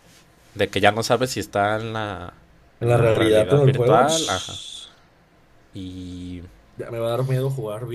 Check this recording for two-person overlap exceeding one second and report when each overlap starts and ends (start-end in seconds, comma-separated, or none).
2.8-4.6